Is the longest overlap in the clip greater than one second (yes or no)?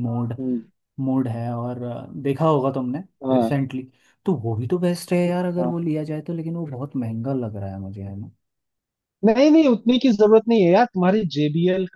no